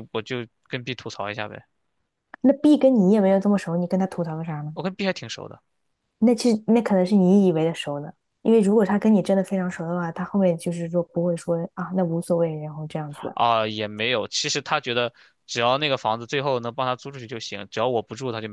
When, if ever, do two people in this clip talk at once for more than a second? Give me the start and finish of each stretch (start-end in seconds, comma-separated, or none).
none